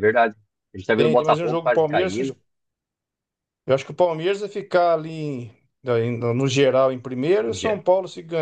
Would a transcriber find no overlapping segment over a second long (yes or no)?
no